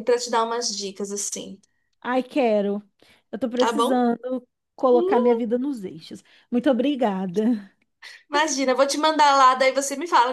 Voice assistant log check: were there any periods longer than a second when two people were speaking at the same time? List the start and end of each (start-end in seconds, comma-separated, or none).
none